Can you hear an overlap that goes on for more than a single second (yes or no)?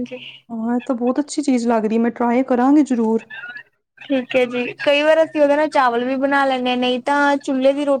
no